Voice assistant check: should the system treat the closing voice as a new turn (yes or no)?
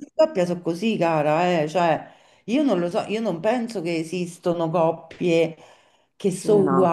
no